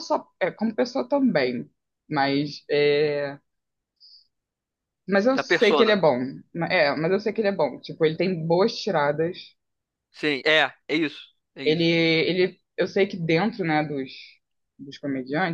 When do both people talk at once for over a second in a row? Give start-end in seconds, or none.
none